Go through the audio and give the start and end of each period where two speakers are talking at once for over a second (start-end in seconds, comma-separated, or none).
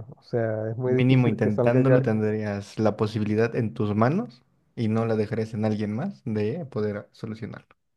0.9-2.1